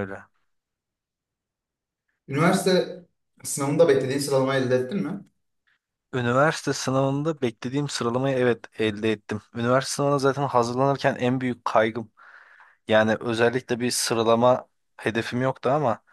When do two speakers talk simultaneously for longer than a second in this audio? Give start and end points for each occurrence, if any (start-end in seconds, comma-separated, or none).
none